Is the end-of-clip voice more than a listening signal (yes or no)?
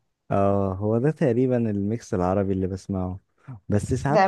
yes